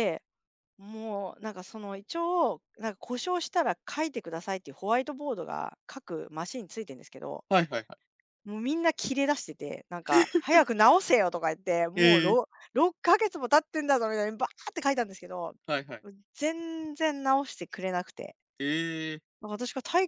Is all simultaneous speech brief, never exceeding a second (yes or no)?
yes